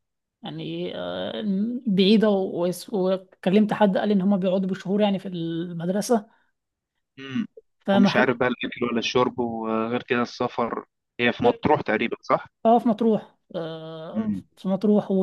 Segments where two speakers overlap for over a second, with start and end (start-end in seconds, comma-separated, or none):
none